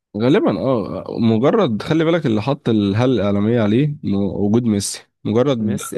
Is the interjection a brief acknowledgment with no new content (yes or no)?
yes